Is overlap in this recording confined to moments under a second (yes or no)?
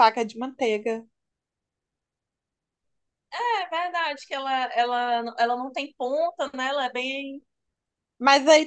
yes